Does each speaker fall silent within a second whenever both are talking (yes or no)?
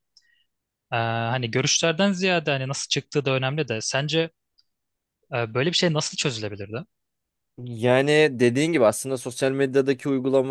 yes